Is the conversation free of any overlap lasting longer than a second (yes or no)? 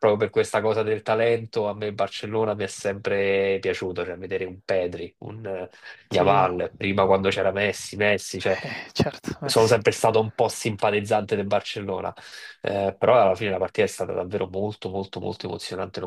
yes